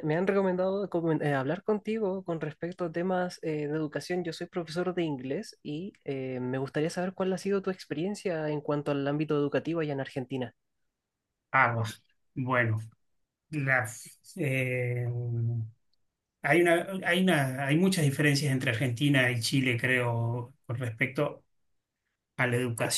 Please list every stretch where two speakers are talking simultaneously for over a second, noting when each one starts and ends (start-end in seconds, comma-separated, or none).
none